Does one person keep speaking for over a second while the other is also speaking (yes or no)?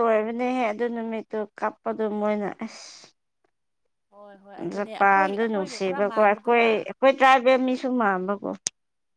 yes